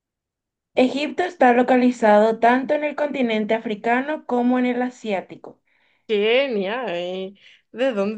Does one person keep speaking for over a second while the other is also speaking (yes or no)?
no